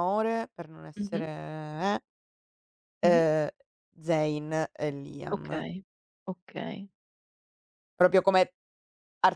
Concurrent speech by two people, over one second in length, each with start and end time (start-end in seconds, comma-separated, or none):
none